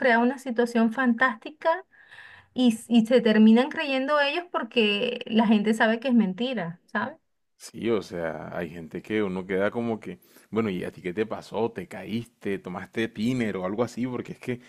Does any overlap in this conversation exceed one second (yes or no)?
no